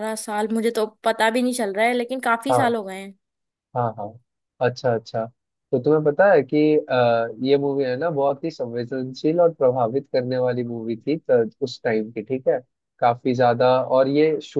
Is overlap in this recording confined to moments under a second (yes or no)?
yes